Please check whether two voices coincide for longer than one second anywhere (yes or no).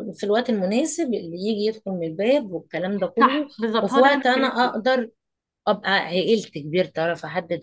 yes